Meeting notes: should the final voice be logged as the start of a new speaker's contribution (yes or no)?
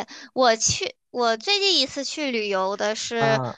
no